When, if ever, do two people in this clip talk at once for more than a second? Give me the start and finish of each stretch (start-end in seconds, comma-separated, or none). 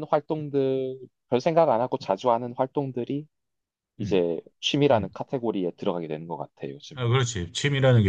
none